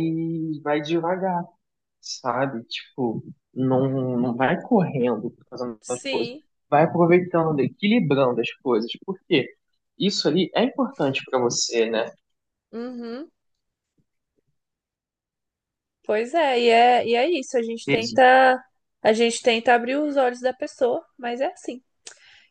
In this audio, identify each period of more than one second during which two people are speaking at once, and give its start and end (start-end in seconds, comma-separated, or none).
none